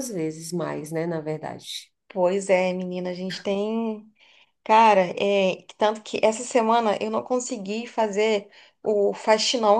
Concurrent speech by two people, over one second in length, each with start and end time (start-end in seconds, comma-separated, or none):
none